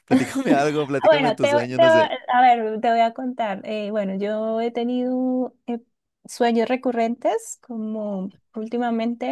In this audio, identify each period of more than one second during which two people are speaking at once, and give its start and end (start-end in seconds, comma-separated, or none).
0.8-2.1